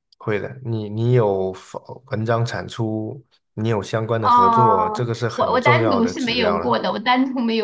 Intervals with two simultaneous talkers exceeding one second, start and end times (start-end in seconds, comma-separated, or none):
4.2-6.8